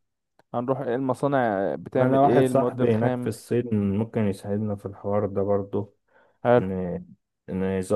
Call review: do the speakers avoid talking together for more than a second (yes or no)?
no